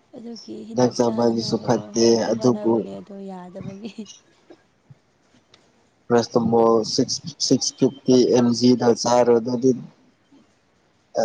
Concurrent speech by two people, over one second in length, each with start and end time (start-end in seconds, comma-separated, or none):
0.9-2.9